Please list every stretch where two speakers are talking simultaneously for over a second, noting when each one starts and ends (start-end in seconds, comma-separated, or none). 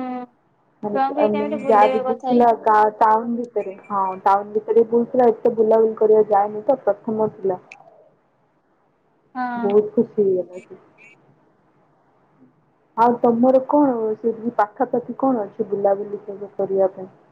0.9-2.5